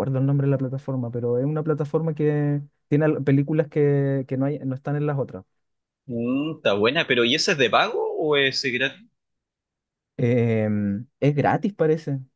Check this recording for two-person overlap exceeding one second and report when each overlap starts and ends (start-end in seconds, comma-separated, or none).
none